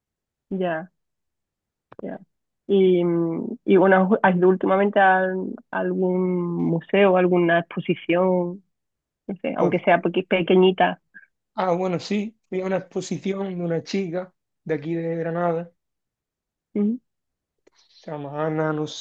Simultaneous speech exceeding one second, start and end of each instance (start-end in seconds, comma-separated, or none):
none